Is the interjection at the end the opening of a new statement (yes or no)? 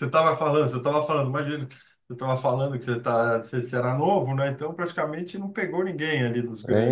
yes